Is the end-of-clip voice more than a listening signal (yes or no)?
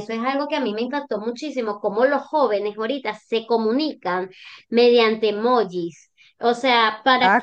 yes